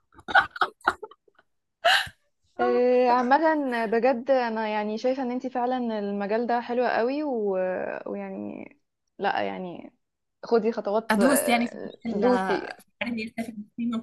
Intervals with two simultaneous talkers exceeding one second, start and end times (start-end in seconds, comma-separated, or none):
11.1-12.7